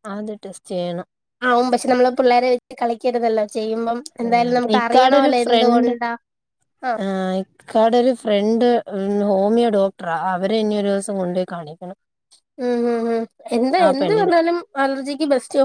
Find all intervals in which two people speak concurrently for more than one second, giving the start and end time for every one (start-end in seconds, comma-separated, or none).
4.3-5.9